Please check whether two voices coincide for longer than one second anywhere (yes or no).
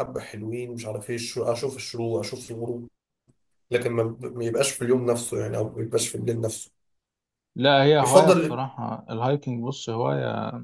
no